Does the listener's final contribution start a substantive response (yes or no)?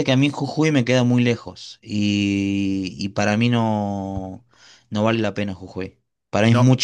no